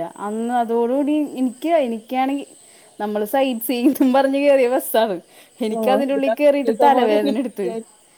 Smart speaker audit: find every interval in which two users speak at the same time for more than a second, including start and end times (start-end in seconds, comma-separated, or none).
5.8-7.7